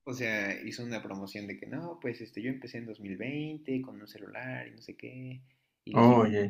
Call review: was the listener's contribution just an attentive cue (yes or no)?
yes